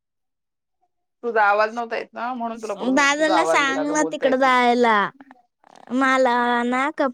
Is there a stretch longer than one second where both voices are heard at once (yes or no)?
yes